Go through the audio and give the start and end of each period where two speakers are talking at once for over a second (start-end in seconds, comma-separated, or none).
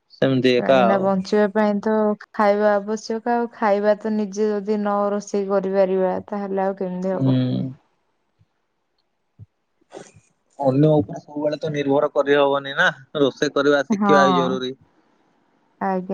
none